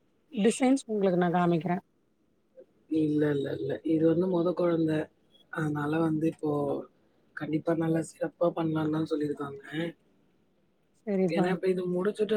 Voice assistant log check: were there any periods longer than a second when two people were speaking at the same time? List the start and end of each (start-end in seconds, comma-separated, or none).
none